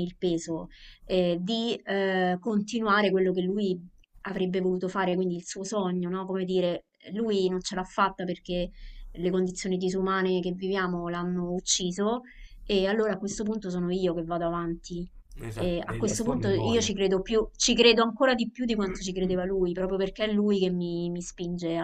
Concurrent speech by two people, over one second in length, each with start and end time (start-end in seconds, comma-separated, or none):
15.5-16.9